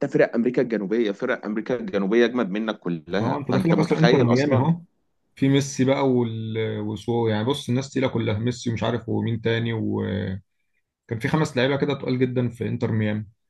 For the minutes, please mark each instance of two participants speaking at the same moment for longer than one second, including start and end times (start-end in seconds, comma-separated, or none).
3.2-4.7